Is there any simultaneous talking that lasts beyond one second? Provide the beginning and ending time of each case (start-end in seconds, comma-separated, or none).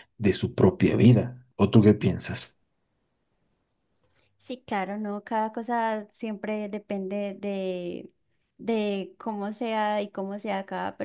none